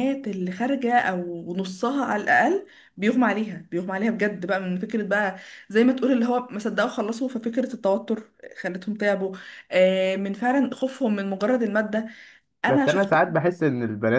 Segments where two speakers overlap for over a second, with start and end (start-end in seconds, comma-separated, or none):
none